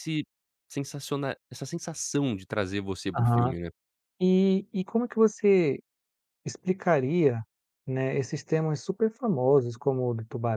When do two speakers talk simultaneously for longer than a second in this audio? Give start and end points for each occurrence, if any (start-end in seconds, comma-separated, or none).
none